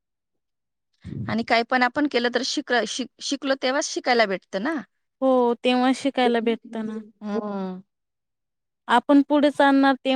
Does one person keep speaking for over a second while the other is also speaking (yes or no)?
no